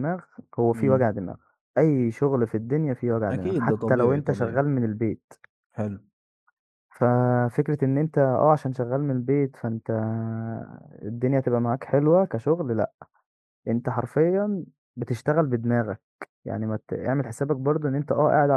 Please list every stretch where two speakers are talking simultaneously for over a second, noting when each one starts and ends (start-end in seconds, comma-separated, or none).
3.3-4.6